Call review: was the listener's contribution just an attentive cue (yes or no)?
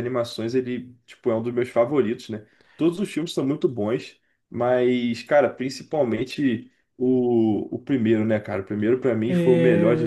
no